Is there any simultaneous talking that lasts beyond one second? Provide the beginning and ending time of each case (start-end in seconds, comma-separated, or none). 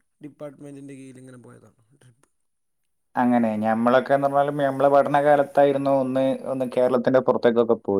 none